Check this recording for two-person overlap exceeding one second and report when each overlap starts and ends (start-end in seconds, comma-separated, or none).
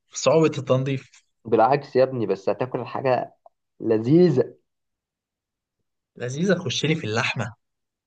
none